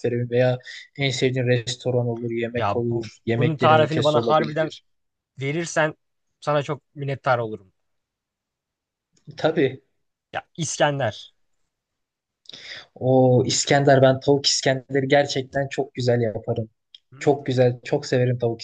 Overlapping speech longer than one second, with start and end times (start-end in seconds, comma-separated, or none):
2.5-4.7